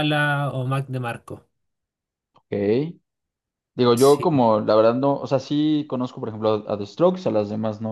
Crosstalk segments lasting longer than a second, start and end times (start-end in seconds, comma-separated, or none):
none